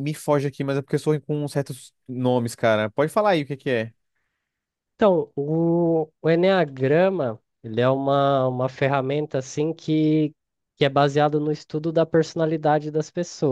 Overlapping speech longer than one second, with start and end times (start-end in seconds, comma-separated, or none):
none